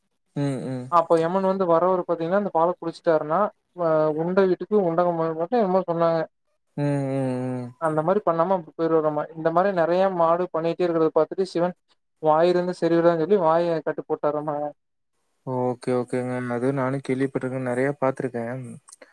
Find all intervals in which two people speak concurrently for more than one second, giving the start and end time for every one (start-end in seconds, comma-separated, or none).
none